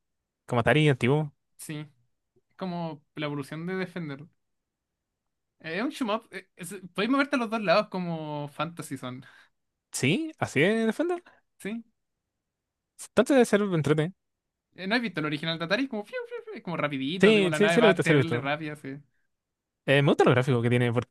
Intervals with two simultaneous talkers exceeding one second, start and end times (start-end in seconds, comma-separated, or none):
17.2-18.5